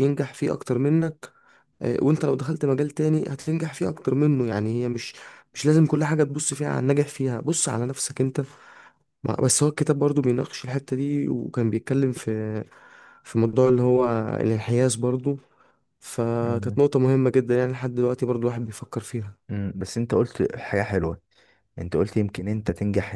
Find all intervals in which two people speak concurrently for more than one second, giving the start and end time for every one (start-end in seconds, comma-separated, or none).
none